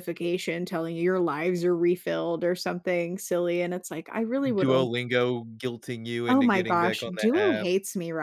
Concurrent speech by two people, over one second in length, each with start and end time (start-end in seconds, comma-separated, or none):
6.3-7.7